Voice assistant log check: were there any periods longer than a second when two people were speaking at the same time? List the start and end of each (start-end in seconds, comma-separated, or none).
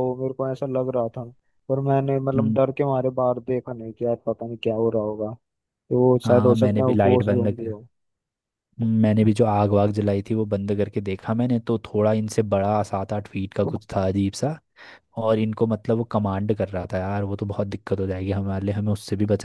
6.2-7.7